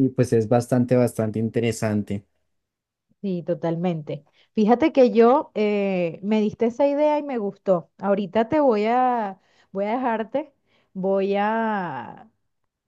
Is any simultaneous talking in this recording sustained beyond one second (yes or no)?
no